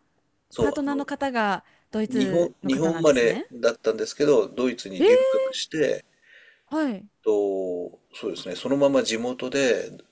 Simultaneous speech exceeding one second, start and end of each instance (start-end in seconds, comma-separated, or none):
2.1-3.5